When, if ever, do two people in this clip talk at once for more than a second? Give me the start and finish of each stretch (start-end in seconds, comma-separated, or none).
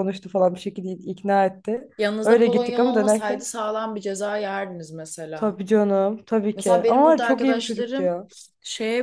2.2-3.5, 6.5-8.1